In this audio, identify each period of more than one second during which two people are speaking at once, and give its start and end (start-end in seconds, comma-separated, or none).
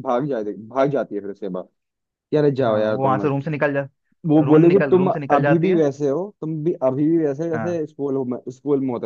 4.5-5.8